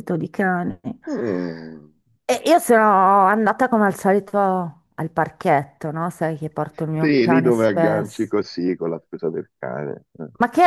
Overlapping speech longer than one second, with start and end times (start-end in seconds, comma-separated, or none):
7.0-8.3